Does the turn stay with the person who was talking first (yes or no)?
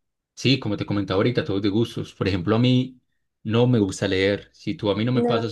yes